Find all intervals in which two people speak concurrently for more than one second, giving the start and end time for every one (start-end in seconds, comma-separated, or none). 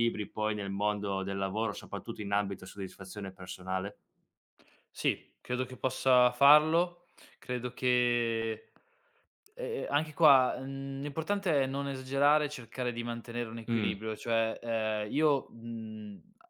none